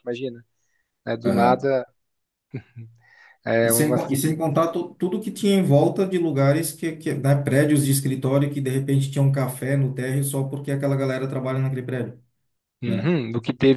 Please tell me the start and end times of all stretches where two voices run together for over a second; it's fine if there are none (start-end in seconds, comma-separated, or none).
none